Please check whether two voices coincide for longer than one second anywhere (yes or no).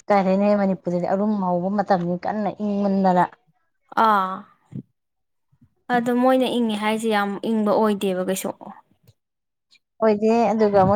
no